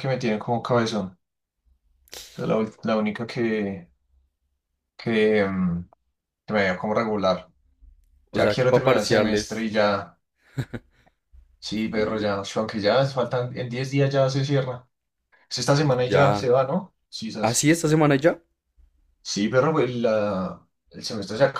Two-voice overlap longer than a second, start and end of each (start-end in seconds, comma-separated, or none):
8.3-9.7